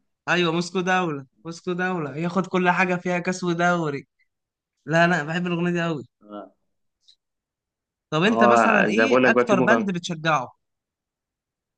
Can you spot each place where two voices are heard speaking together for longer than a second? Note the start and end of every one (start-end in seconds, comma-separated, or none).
8.2-9.9